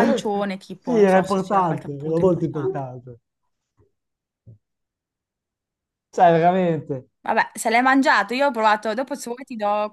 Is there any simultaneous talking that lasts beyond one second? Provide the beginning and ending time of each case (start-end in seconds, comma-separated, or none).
0.8-2.8